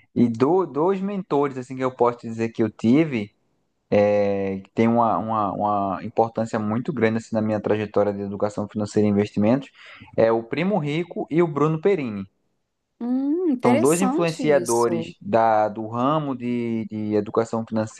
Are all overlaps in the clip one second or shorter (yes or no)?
no